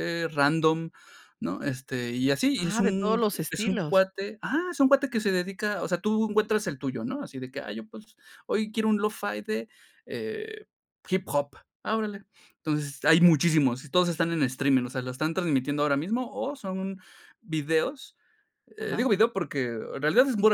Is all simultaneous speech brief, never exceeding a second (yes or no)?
no